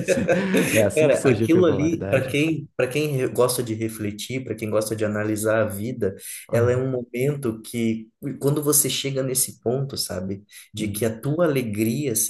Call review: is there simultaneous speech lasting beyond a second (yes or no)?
yes